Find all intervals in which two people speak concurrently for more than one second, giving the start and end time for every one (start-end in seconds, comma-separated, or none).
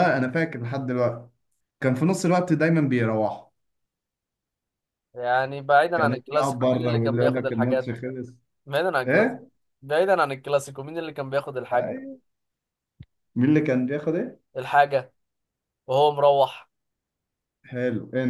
5.9-8.0